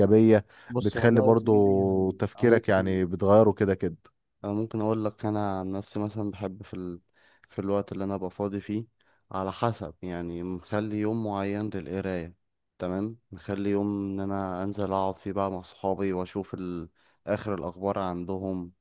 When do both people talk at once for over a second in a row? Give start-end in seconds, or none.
0.8-3.0